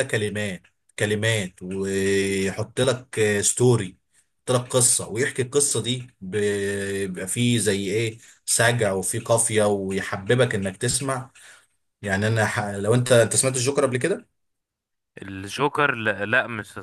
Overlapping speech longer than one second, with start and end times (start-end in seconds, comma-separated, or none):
none